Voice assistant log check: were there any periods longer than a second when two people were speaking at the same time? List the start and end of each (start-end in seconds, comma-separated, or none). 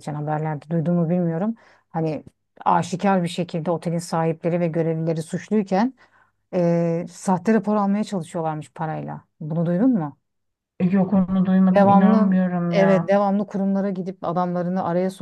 11.7-13.1